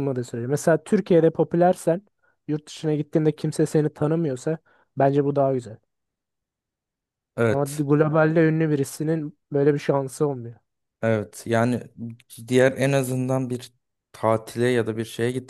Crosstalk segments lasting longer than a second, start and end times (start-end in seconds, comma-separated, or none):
none